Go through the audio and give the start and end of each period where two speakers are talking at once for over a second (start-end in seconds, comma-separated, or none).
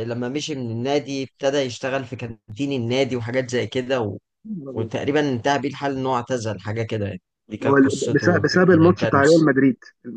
7.7-9.5